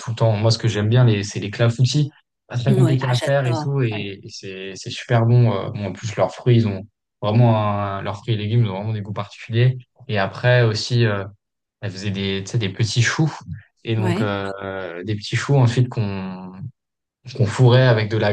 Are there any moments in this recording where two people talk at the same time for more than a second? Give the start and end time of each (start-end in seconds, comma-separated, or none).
2.7-4.1